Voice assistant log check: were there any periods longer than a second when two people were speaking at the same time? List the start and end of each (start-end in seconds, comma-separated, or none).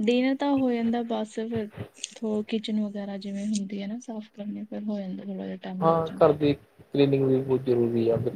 none